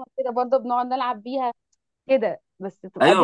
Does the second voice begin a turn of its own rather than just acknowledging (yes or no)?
yes